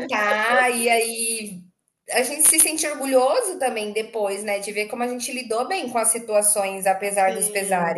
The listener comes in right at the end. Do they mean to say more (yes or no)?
yes